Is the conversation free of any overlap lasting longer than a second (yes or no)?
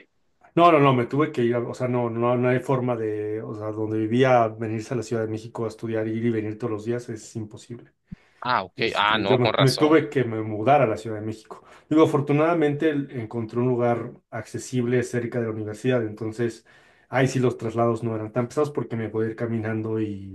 no